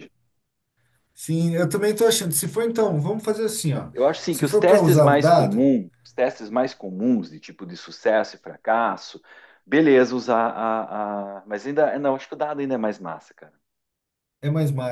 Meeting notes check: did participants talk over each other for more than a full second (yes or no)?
yes